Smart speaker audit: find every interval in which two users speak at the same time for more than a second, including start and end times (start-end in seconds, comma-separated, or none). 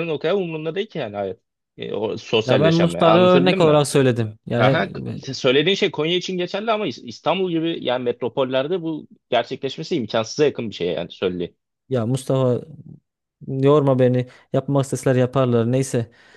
2.5-3.8